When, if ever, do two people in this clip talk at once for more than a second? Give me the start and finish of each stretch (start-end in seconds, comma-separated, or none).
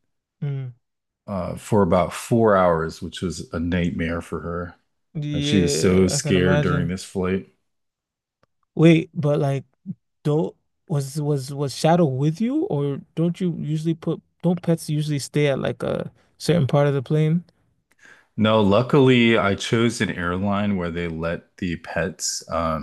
5.3-6.9